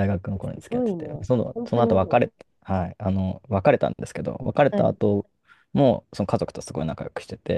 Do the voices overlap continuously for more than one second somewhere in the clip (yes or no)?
yes